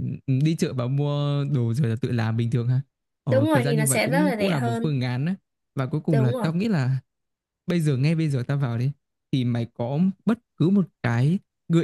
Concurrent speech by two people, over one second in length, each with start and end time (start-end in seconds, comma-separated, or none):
3.3-5.0